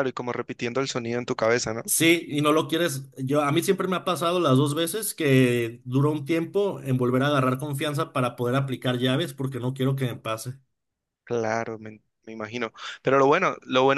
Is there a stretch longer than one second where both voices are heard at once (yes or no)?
no